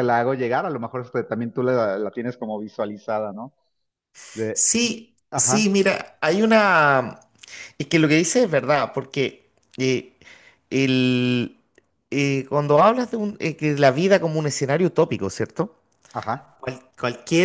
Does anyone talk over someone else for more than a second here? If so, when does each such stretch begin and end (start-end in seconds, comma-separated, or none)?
none